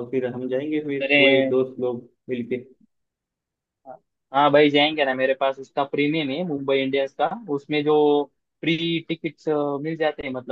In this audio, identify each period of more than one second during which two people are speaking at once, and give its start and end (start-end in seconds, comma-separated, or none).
none